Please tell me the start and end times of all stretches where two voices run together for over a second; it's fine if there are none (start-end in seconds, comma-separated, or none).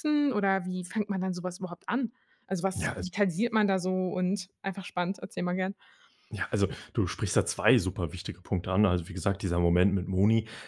none